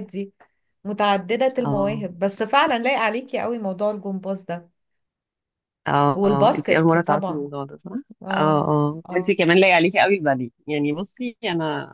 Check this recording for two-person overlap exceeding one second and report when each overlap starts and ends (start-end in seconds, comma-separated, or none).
6.1-7.5